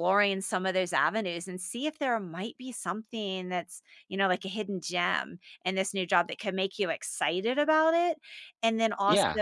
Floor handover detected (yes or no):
no